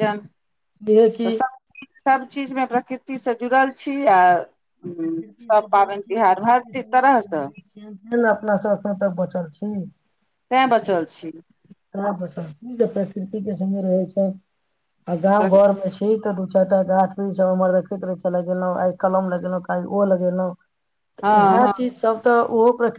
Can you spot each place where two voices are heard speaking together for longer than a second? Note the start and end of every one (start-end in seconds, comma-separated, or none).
5.0-7.5